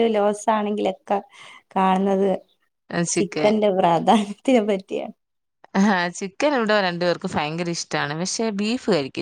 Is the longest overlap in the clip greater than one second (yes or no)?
no